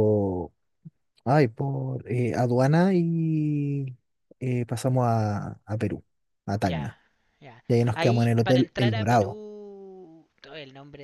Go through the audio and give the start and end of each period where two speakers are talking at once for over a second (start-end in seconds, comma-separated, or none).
7.7-9.4